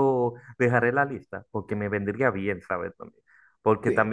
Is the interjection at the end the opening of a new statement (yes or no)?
no